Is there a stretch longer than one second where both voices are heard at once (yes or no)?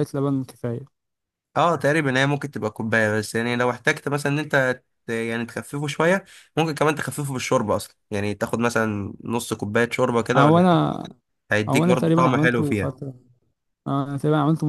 yes